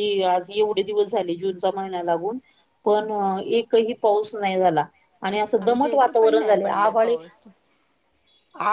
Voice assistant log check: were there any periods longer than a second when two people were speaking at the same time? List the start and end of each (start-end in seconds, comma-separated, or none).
5.6-7.2